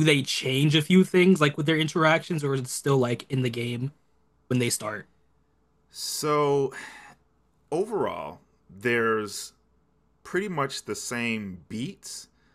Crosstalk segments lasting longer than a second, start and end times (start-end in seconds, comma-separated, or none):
none